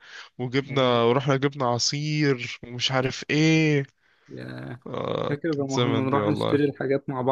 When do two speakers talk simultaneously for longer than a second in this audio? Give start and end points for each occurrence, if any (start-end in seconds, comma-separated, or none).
5.3-6.6